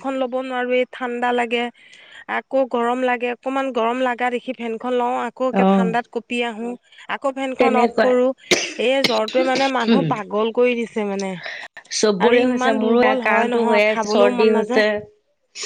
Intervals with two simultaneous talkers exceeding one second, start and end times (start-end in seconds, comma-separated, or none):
12.2-14.9